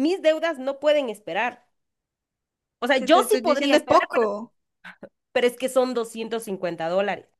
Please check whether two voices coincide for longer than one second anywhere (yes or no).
yes